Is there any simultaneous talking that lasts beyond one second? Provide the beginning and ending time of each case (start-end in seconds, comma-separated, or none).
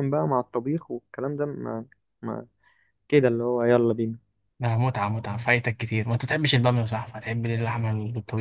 none